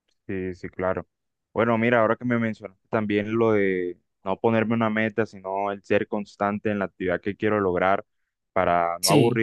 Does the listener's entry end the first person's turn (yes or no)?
no